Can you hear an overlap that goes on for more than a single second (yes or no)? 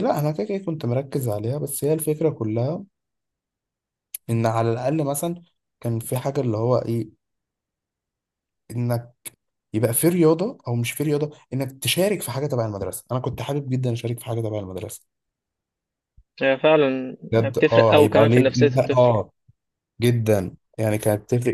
yes